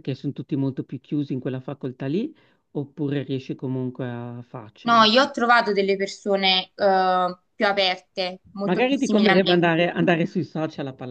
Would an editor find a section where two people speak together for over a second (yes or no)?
yes